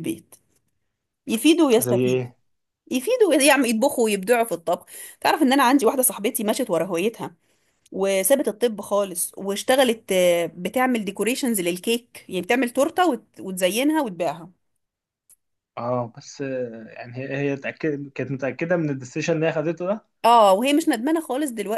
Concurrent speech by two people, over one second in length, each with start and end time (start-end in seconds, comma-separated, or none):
none